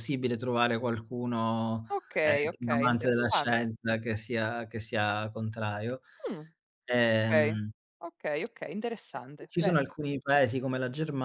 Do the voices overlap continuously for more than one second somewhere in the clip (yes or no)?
yes